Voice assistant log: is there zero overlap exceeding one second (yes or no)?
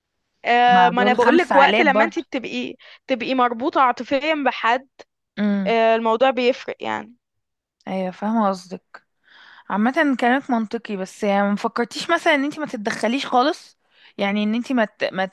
no